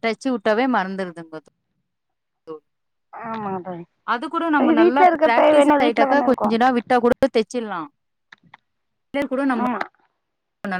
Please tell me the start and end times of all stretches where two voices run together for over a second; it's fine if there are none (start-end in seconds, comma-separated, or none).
4.8-6.5